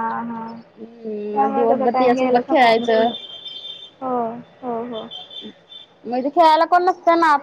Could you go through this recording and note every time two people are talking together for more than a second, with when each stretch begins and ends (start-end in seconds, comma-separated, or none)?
1.3-3.1